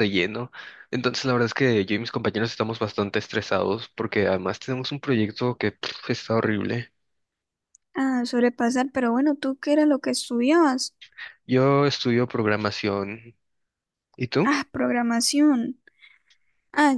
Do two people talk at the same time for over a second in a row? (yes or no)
no